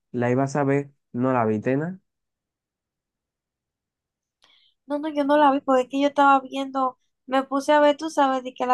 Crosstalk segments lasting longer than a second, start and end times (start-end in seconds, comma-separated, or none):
none